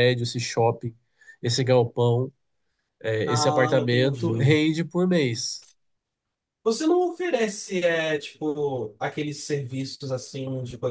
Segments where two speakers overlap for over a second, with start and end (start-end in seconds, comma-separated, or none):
3.2-4.6